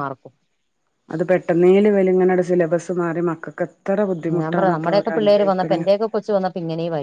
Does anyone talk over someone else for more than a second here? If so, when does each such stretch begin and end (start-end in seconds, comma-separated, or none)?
4.4-5.8